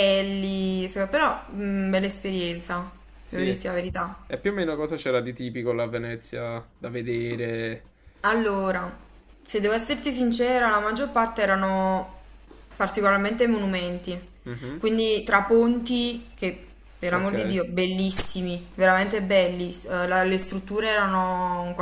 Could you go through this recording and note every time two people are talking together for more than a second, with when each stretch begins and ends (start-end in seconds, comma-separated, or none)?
none